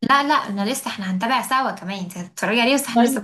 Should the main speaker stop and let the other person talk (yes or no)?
yes